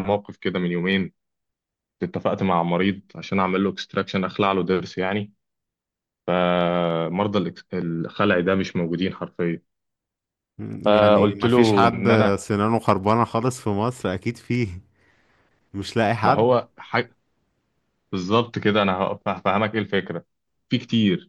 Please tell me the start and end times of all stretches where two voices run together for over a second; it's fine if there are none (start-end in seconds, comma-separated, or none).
10.8-12.3